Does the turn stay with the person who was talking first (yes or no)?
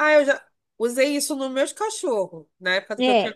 no